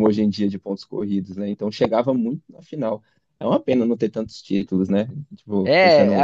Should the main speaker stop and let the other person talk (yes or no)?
yes